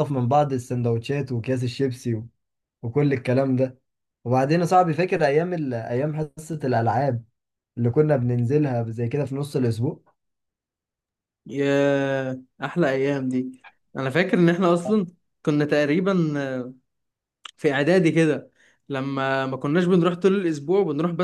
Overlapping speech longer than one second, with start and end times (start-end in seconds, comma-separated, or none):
none